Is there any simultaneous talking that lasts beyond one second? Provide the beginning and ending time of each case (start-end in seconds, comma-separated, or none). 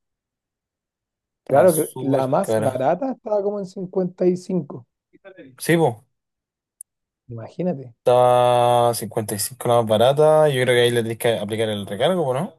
1.4-2.8